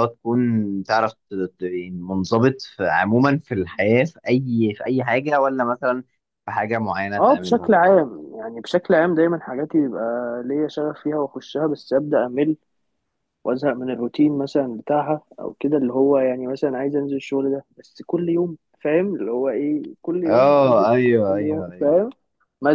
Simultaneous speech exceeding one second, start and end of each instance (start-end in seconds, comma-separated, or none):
20.2-21.9